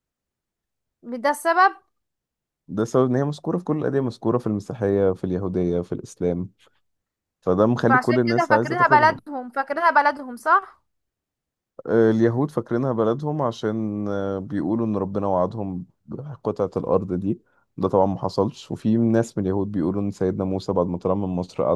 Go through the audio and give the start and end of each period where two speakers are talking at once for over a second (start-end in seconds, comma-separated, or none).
7.9-9.2